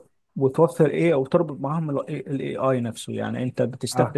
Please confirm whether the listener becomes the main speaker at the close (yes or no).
no